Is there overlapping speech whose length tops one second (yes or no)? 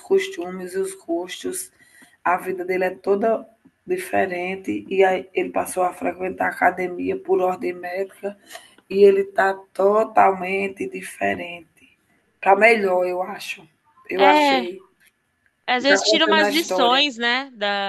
yes